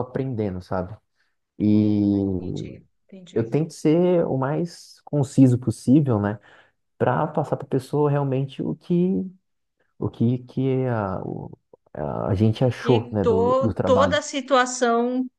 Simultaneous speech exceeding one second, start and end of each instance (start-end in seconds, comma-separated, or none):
12.8-14.2